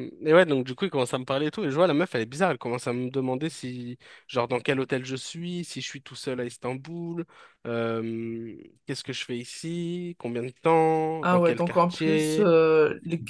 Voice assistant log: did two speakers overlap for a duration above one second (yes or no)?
yes